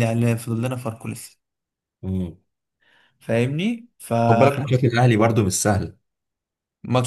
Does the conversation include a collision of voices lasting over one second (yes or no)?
no